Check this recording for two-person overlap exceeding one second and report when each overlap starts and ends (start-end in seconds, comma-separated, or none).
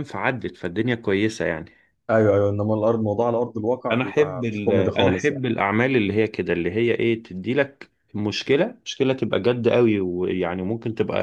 3.9-5.4